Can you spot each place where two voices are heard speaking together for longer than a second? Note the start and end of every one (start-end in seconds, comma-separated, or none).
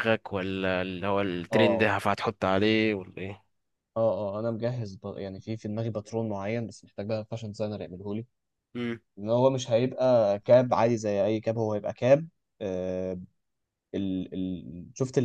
none